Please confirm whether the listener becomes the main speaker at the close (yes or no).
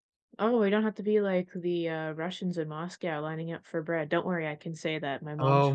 yes